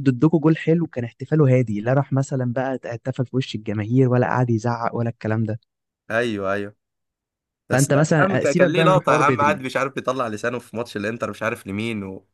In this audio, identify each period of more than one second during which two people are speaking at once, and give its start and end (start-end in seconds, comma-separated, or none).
7.7-9.6